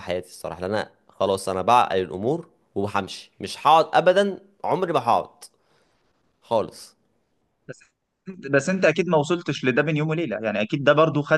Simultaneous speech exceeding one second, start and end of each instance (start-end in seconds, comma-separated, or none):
none